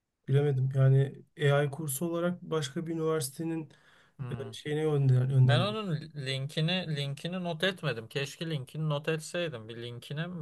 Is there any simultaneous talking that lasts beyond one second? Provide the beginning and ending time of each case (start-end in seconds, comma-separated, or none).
none